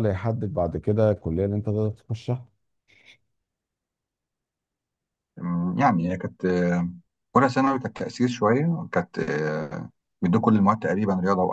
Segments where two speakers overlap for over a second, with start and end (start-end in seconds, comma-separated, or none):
none